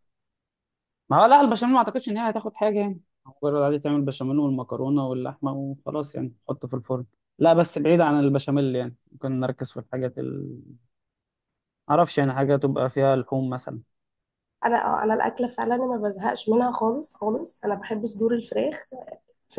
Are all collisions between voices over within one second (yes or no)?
yes